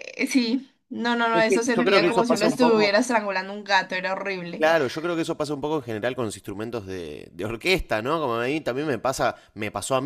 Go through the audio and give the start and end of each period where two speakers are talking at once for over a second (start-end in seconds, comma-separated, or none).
1.5-2.9